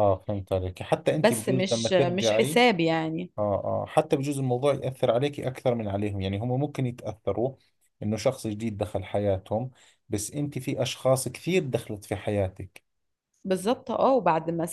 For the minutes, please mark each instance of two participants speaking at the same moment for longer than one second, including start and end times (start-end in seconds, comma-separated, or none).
1.1-2.6